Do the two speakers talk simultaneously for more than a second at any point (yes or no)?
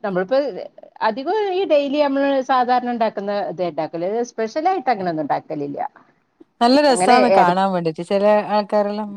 no